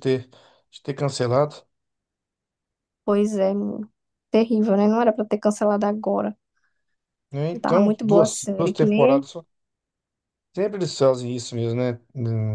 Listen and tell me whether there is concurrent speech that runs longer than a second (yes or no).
yes